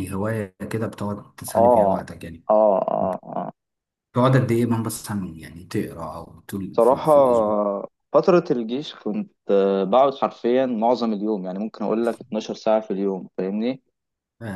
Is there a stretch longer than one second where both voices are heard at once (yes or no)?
no